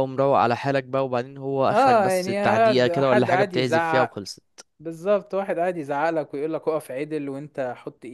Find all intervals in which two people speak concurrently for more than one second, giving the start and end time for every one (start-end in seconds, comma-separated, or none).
1.7-4.2